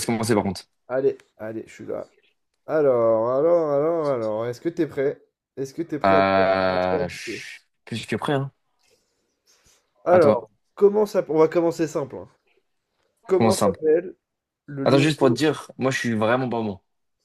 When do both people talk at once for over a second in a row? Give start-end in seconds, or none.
6.0-7.4